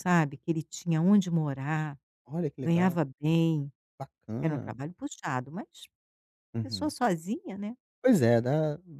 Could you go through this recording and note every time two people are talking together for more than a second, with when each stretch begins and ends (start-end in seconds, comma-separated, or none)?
none